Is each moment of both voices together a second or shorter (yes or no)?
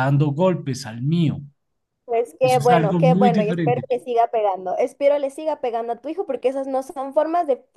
no